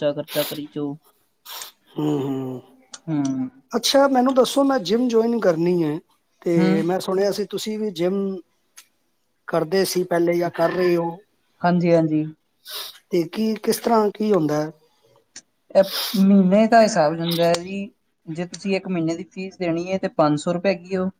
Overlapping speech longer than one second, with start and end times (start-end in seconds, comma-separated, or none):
none